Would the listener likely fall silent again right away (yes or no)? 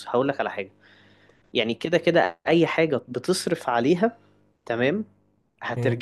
yes